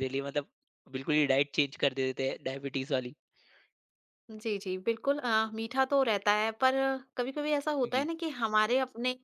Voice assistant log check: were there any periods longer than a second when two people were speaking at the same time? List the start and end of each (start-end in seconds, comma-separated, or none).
none